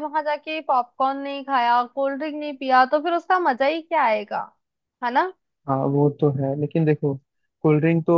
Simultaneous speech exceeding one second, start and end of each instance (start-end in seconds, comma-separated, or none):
none